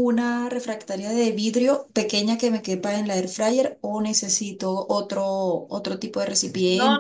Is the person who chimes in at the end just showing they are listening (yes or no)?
no